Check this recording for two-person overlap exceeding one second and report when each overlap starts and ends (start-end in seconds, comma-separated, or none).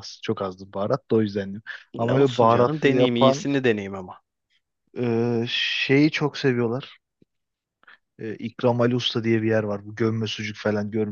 2.0-3.5